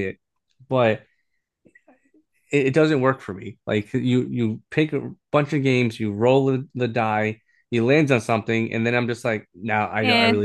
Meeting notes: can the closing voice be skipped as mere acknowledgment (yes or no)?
yes